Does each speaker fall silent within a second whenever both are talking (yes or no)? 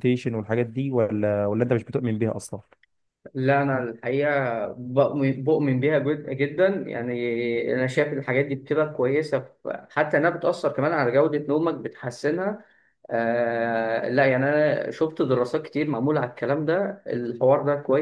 yes